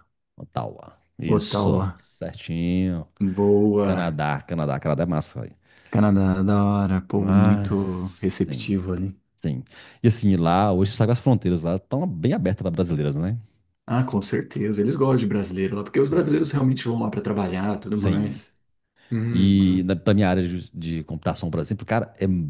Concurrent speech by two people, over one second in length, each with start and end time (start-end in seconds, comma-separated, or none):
7.1-8.7